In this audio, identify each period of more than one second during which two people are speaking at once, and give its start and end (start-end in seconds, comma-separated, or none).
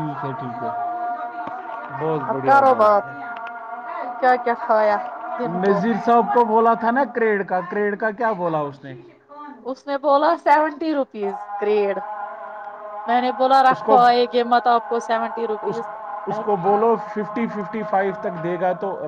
none